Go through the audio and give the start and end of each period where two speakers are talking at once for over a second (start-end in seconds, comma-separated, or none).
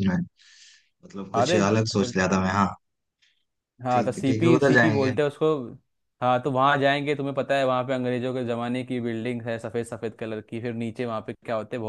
3.9-5.1